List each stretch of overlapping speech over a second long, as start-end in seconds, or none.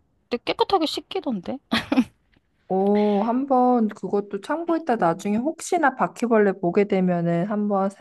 none